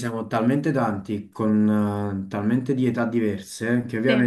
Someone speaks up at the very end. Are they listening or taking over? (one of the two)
listening